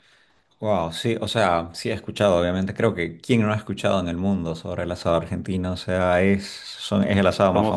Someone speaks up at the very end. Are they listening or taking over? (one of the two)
listening